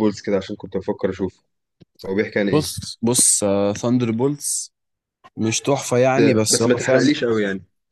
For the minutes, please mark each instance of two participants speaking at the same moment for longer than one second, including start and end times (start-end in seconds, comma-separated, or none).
6.0-7.2